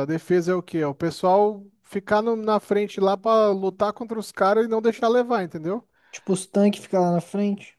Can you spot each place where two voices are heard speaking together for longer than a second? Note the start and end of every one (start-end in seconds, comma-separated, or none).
none